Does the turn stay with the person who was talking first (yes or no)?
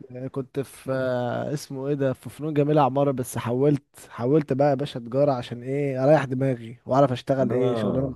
no